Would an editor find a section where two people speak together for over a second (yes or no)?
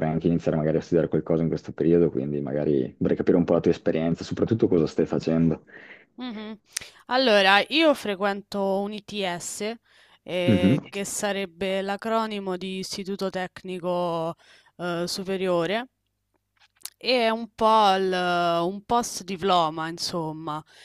no